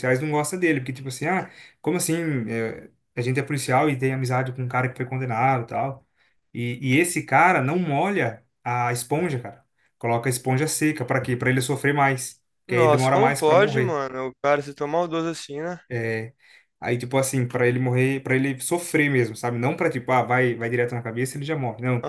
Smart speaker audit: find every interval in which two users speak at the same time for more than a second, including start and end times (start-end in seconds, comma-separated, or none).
12.7-14.0